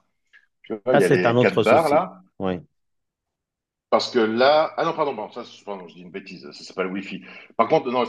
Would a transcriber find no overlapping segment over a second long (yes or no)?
no